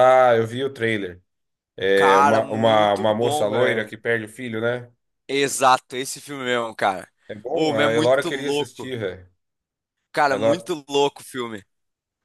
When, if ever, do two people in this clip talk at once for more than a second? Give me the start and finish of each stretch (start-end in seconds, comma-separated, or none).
1.9-3.9, 7.5-8.9